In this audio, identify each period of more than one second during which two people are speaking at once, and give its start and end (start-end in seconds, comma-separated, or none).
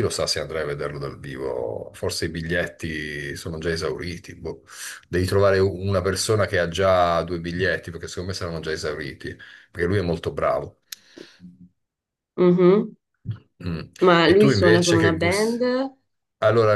14.2-15.6